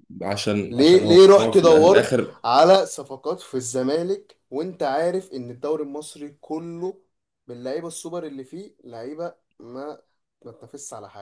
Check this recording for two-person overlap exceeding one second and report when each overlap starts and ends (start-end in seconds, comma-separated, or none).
0.7-2.4